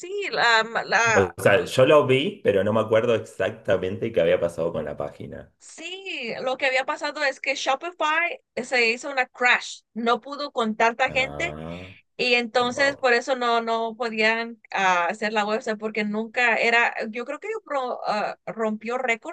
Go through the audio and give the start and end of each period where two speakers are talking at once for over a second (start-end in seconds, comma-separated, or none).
none